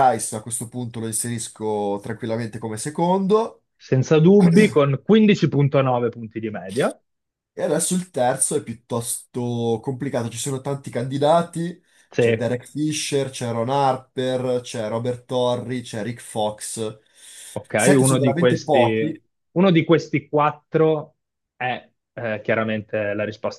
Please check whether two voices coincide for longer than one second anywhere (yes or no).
yes